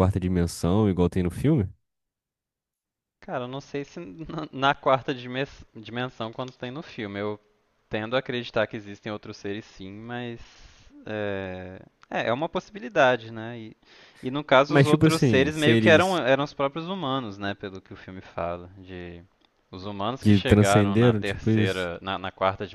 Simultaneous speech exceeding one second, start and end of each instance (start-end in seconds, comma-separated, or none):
14.7-16.2, 20.2-21.9